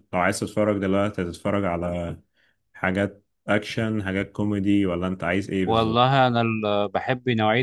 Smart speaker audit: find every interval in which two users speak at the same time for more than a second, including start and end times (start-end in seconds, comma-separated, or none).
none